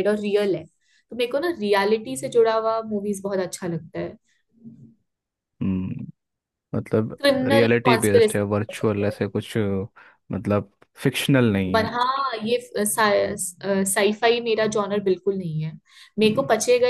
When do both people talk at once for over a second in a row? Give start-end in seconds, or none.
7.2-9.1